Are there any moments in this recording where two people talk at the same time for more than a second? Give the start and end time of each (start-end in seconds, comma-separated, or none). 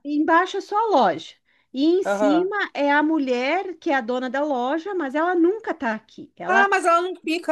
none